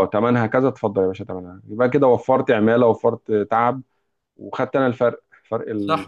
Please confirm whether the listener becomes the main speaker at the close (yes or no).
yes